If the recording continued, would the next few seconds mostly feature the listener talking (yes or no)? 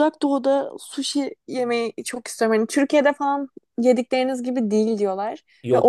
no